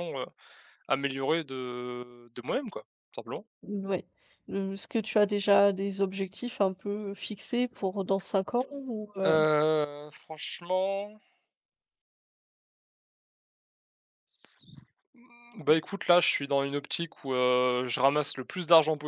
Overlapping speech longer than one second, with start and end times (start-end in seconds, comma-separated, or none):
none